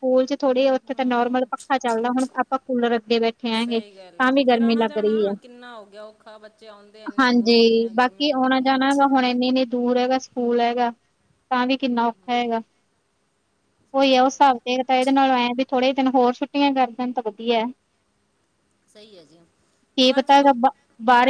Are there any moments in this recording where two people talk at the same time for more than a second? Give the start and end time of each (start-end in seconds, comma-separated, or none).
3.5-5.3, 7.2-8.6